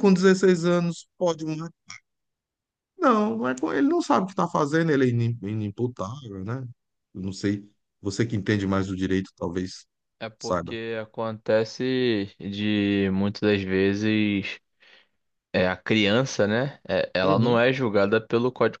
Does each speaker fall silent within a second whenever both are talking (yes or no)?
yes